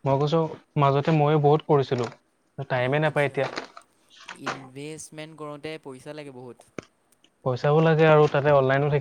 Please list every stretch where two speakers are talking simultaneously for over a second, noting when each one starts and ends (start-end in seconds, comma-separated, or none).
none